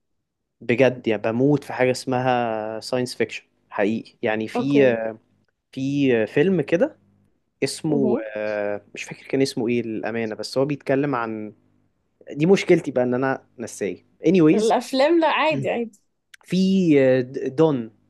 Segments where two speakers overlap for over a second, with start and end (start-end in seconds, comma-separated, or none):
none